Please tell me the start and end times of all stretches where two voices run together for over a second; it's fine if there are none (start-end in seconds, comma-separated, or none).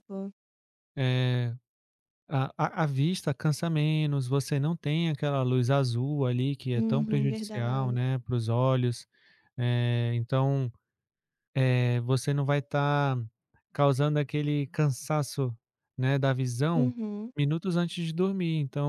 6.7-8.0